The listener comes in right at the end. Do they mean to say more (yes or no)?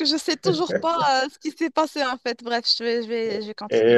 yes